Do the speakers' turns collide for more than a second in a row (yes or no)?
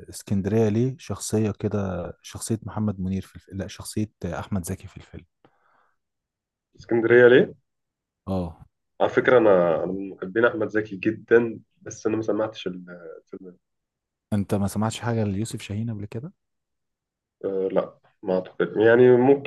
no